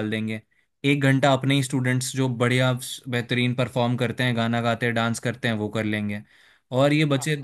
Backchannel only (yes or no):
yes